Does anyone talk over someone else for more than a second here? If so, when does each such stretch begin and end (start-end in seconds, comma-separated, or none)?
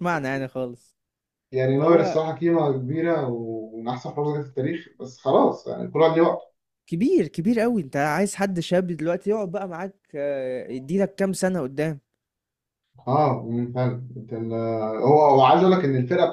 none